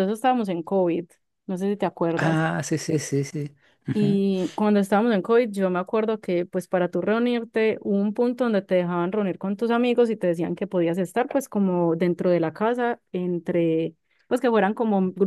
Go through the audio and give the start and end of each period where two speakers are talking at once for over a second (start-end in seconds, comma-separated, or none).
none